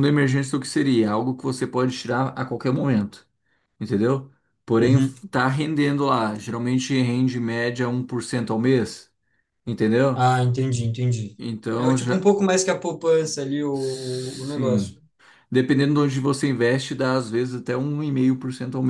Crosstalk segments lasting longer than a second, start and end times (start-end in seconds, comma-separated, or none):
13.7-15.0